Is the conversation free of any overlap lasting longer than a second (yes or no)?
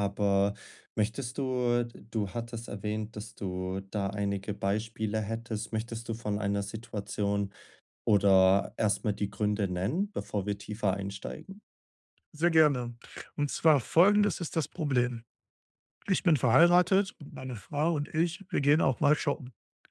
yes